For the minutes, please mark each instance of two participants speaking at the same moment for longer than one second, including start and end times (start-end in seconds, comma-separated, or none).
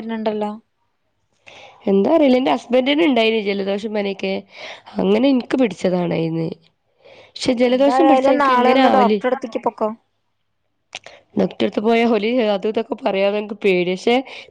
7.7-9.2